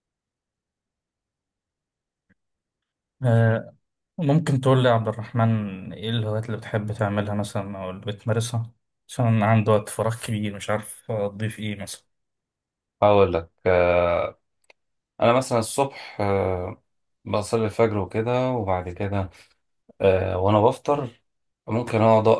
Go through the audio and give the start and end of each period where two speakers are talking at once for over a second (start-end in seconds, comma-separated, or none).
none